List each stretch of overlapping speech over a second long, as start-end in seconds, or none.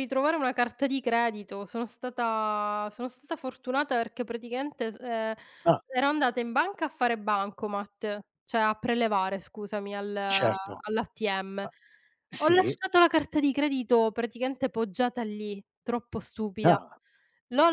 none